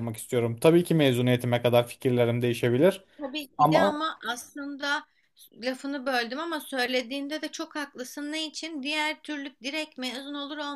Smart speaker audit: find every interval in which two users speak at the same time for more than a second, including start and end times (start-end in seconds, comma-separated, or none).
none